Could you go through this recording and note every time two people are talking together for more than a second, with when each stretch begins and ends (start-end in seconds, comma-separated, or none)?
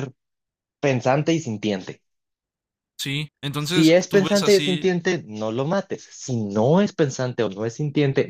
3.6-4.9